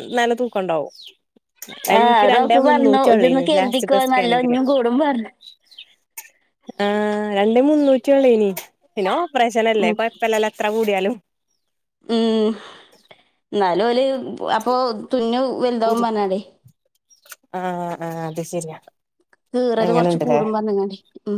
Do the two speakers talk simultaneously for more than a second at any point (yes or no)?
yes